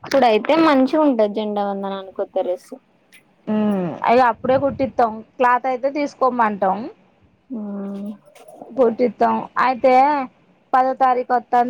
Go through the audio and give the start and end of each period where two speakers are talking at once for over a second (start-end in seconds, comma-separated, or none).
none